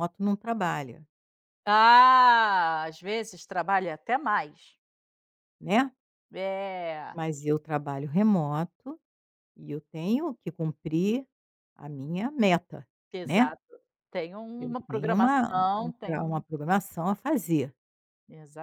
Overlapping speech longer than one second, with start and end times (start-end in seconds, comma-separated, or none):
14.6-16.4